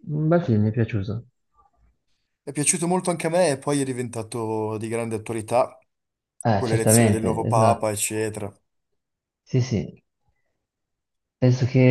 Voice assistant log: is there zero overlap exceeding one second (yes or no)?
no